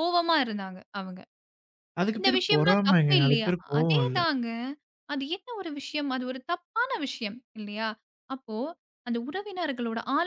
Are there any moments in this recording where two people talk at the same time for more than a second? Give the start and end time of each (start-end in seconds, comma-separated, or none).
2.2-4.2